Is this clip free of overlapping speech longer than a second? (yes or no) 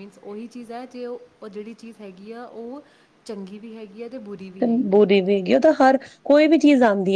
yes